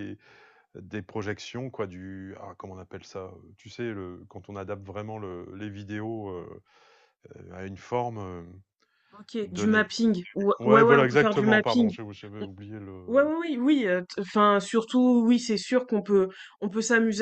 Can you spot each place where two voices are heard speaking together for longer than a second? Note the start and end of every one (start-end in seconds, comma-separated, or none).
10.6-11.9